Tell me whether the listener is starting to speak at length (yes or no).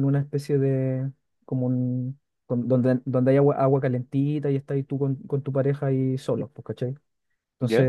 no